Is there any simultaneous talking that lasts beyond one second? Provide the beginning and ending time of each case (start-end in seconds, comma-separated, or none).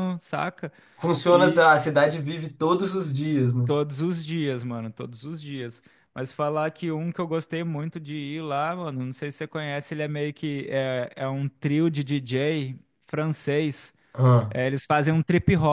none